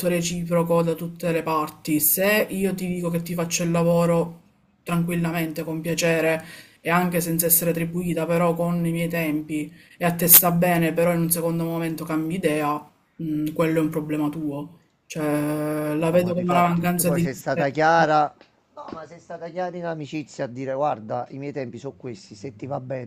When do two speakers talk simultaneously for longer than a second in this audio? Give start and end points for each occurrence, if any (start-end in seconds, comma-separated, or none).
16.1-17.8